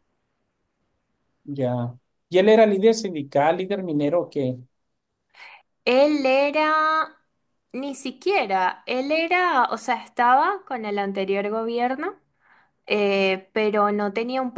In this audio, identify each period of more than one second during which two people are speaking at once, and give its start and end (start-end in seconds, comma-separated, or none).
none